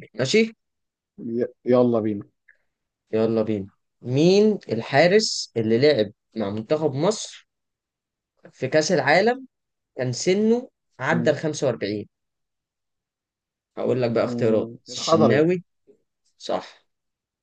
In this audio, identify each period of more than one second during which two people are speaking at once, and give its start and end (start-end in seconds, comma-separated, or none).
14.2-15.5